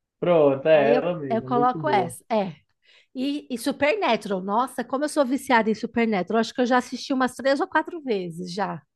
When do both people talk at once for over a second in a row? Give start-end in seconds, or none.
0.7-2.2